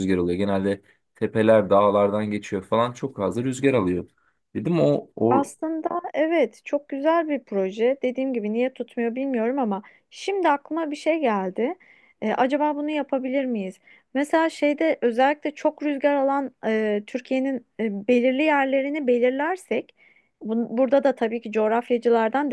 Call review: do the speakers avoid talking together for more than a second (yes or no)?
yes